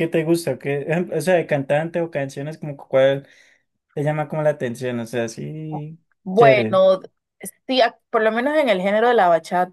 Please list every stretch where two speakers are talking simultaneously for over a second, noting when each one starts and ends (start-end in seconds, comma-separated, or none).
none